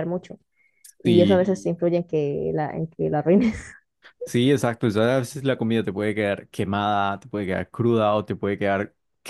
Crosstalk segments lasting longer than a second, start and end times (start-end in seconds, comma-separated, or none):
none